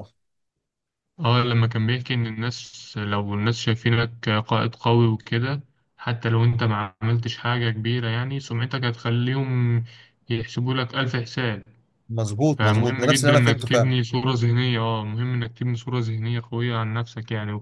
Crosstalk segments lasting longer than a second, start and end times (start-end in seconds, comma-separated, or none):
12.5-13.9